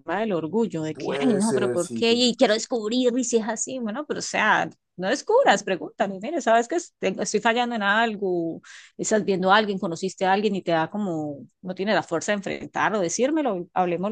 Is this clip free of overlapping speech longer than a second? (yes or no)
no